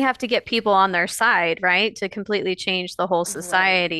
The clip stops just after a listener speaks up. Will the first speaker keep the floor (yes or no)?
yes